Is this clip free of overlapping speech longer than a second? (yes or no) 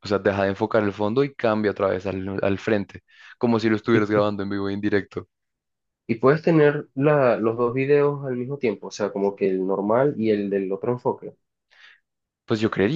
yes